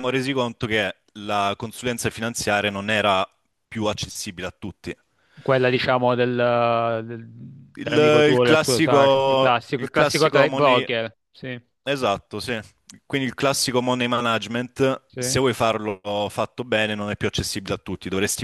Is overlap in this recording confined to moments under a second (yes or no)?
no